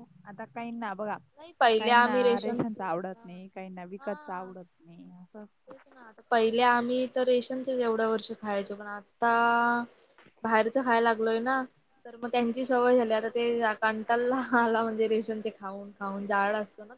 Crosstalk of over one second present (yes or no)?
yes